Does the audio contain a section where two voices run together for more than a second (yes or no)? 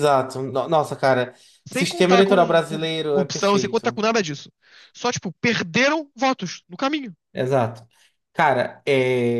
yes